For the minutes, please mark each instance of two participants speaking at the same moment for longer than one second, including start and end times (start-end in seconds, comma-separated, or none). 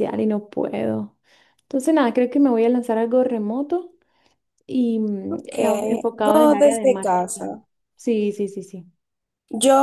6.2-7.6